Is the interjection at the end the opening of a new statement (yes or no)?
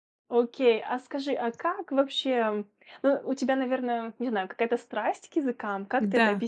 yes